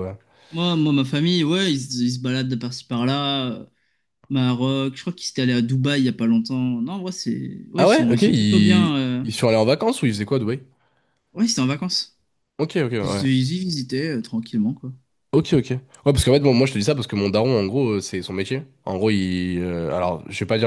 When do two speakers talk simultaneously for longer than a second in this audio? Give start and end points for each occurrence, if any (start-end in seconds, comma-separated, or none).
7.8-9.2